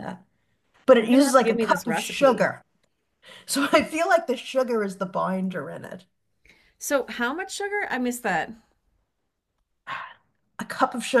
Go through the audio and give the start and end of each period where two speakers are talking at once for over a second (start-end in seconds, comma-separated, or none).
1.0-2.5